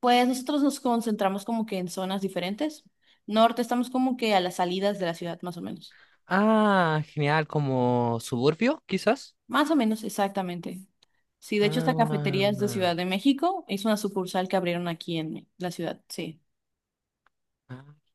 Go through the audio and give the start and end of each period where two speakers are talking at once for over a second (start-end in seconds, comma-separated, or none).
11.6-12.9